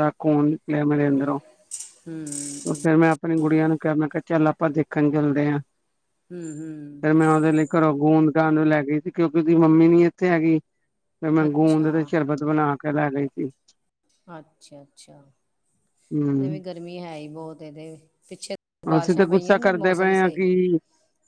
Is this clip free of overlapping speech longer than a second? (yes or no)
no